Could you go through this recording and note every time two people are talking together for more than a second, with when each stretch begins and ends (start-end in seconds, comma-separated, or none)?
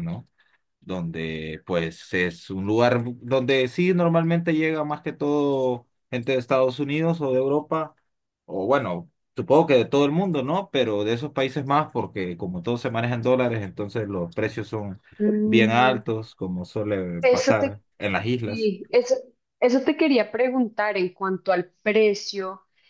none